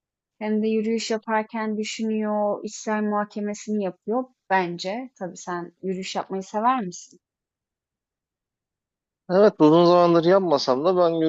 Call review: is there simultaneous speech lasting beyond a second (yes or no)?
no